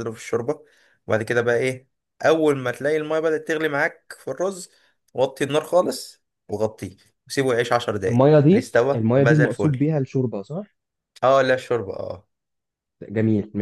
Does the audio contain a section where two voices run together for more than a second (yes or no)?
yes